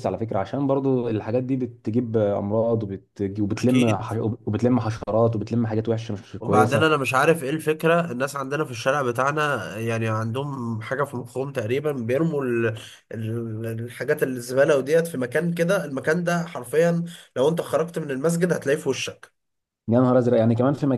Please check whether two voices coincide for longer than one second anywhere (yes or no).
no